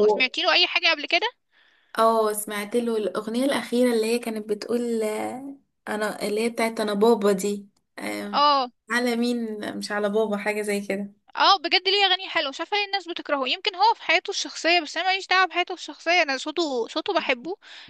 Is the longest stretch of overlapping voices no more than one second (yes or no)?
yes